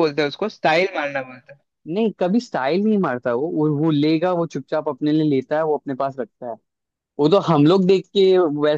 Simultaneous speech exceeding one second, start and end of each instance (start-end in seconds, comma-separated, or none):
none